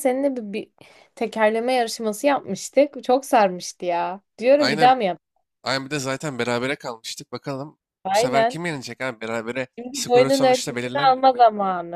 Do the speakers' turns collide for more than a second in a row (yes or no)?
yes